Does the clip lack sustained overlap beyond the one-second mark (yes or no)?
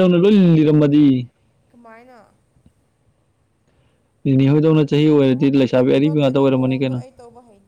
no